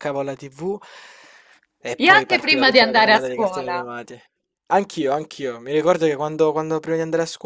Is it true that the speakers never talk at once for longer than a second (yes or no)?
no